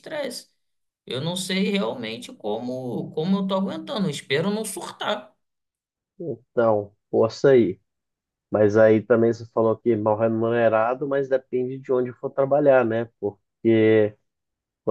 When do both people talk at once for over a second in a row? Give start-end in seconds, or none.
none